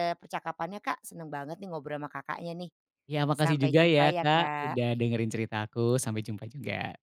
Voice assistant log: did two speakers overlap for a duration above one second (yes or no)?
yes